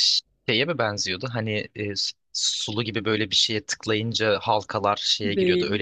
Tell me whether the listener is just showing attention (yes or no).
no